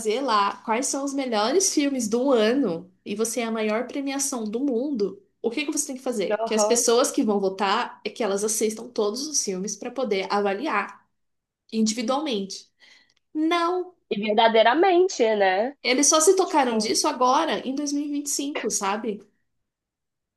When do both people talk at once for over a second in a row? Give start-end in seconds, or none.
none